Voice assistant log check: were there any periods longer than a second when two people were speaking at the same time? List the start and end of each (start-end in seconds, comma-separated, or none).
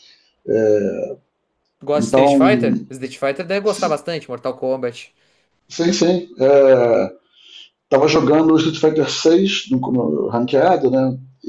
none